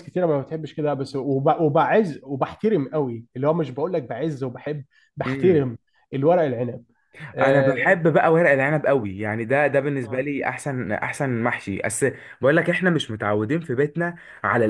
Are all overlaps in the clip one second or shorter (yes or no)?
yes